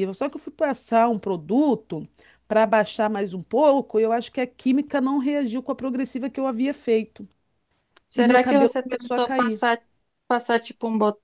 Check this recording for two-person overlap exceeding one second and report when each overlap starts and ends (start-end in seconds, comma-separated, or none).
8.1-9.6